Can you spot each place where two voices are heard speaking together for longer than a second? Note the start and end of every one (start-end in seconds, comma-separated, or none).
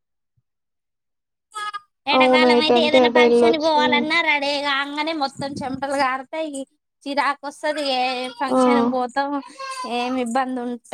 2.2-4.0